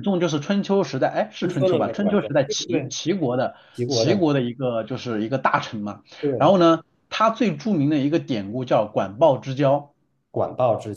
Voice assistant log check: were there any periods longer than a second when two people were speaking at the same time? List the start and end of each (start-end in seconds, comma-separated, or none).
1.4-2.9